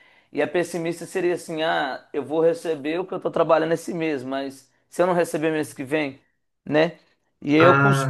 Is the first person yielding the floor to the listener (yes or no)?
no